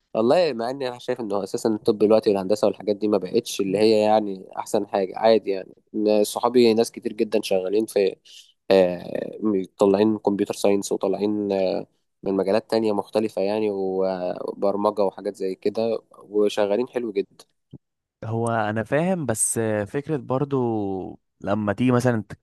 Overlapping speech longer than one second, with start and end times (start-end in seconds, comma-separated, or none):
none